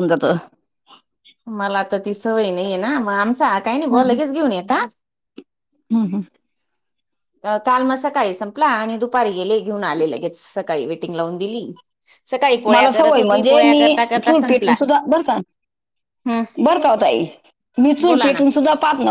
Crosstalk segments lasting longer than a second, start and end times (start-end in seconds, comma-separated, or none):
12.7-14.7